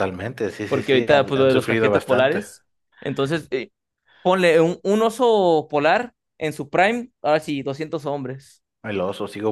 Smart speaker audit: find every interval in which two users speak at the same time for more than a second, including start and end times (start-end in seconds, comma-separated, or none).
0.7-2.5